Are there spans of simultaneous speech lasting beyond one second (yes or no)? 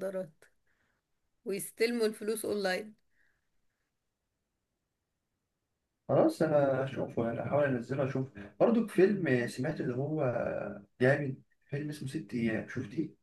no